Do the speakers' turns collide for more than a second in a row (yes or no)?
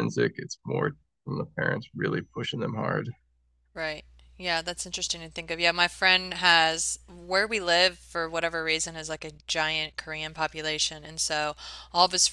no